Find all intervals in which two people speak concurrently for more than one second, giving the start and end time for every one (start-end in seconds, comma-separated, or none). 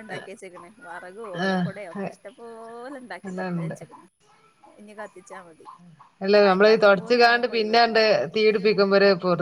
6.4-8.0